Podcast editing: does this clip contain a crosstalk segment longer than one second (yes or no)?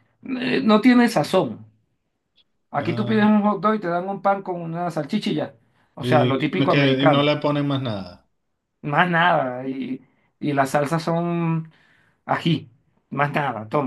yes